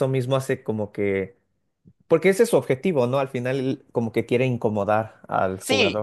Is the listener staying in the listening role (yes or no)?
no